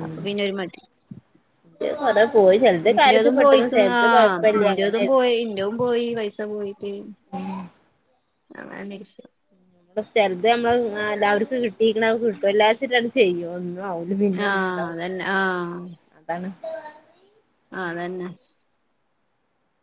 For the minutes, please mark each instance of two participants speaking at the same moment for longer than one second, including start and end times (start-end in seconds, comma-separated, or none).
2.9-5.2